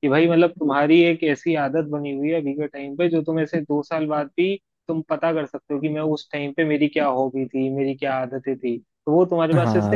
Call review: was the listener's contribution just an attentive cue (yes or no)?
no